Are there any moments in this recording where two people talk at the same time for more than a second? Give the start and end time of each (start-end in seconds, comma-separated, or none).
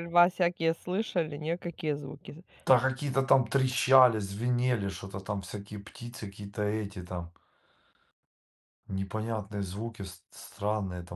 none